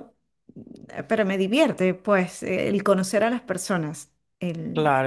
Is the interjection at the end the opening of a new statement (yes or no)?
yes